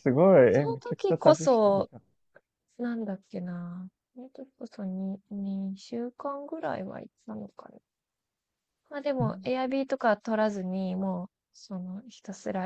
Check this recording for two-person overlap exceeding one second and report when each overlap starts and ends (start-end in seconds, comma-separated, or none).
0.5-1.9